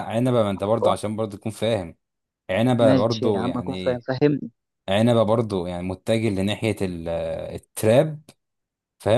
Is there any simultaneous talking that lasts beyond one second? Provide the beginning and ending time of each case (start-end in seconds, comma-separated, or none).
2.8-4.0